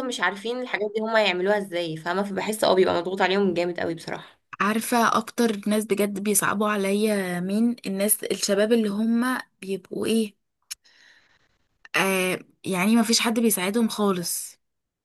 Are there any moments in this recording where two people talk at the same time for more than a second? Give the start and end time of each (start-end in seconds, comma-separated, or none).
none